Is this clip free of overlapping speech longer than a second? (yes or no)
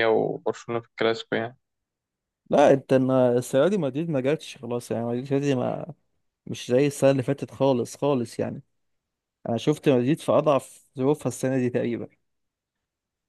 yes